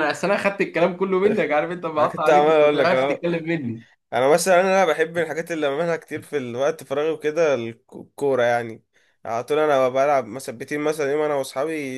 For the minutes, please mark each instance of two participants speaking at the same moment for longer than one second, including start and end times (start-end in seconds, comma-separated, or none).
2.0-3.2